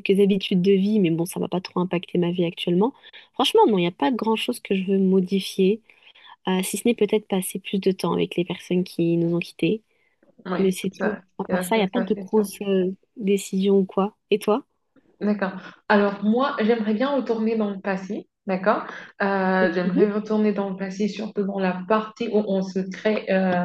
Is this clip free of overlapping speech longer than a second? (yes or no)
no